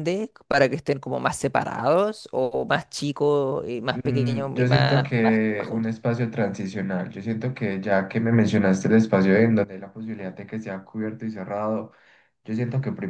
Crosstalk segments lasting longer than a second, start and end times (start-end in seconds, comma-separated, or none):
3.9-5.9